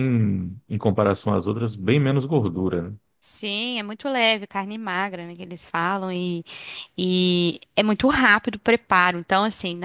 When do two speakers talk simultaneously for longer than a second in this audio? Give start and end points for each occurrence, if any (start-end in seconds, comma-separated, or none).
none